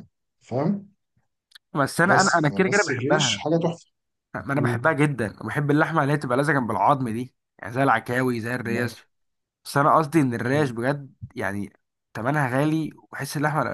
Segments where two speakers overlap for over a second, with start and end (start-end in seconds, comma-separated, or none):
2.0-3.5